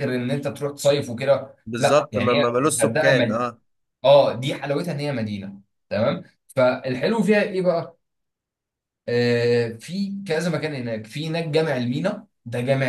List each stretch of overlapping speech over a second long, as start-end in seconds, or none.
1.7-3.4